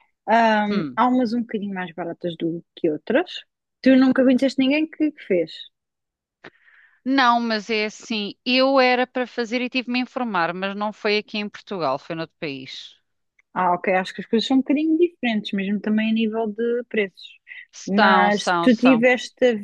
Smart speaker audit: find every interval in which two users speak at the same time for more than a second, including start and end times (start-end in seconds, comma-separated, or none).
17.9-19.1